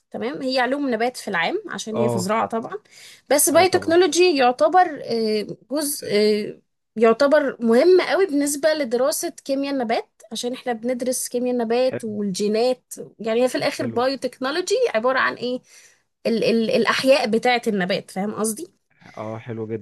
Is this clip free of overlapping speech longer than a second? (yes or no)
yes